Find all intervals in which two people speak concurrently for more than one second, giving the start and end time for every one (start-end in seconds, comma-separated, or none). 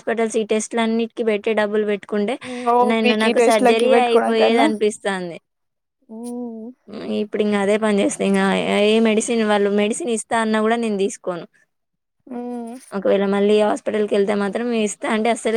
2.9-4.7